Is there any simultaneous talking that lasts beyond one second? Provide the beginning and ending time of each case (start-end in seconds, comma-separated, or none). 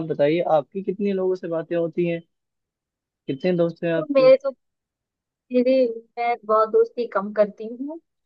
none